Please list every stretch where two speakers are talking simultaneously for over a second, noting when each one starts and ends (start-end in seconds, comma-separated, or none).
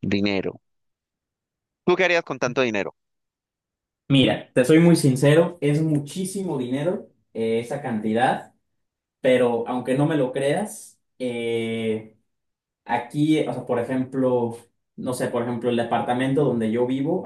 none